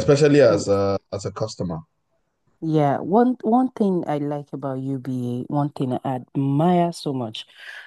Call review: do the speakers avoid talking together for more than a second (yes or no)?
yes